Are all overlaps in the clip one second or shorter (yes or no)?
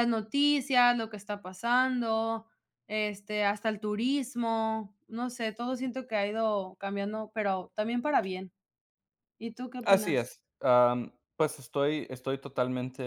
yes